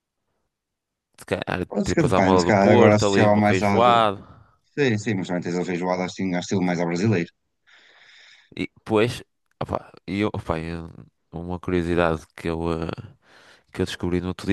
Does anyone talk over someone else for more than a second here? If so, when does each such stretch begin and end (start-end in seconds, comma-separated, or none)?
1.7-3.7